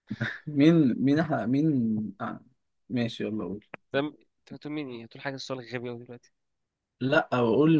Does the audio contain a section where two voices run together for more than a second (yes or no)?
no